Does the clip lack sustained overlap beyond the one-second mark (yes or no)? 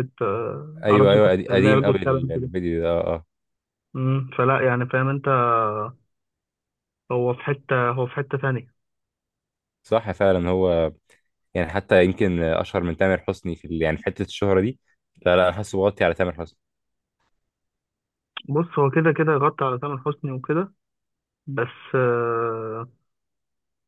no